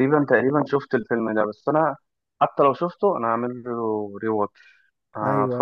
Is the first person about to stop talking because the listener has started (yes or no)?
yes